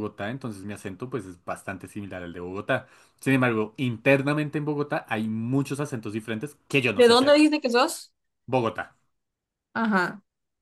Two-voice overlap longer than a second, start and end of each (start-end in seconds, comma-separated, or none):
none